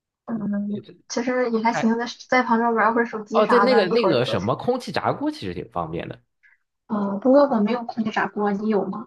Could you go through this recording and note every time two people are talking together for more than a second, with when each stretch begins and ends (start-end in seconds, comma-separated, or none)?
3.3-4.6